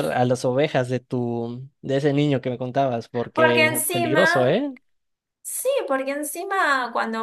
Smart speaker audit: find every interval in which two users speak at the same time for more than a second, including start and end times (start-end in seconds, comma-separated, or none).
3.3-4.6